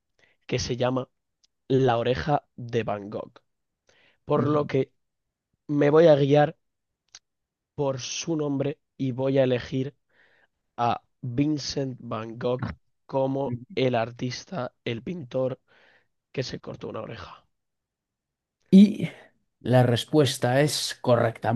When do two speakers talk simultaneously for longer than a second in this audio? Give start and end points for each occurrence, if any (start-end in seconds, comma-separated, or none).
none